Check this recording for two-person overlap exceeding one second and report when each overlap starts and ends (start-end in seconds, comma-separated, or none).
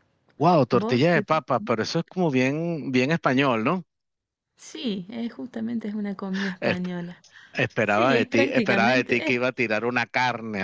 7.8-9.4